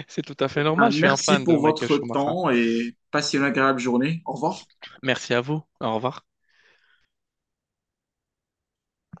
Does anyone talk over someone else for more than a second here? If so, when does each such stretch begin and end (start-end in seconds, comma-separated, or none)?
0.5-2.3